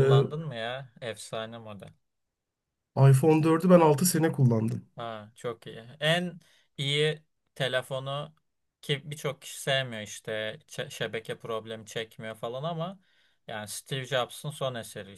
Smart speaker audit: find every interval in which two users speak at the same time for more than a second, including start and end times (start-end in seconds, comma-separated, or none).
none